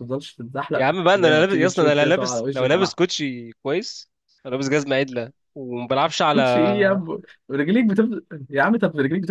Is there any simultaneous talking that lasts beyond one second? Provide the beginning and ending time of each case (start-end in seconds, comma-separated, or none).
0.8-3.0